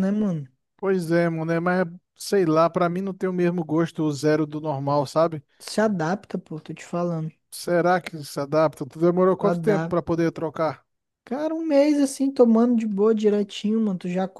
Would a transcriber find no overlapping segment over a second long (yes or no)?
yes